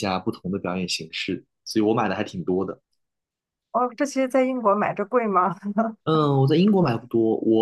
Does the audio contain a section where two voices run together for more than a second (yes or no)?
no